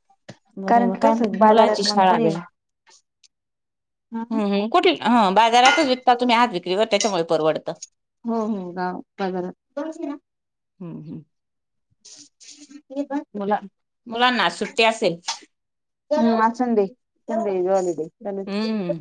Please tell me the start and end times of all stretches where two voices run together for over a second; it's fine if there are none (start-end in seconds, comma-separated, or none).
0.7-2.3